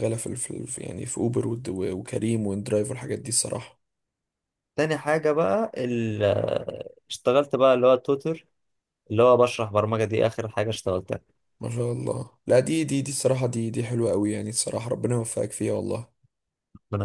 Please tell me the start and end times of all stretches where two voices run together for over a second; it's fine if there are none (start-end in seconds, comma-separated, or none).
none